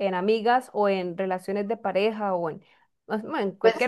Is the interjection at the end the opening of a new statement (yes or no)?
yes